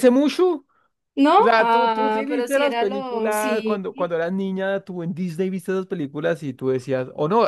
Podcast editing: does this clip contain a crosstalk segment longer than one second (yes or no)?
yes